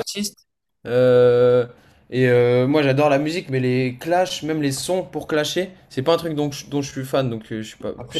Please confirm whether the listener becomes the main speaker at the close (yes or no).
yes